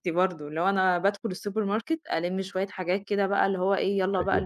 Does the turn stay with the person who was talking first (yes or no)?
yes